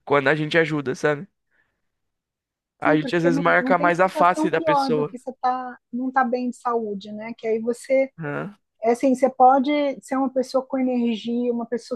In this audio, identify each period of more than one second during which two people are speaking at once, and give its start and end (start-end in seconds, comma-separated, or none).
2.8-5.2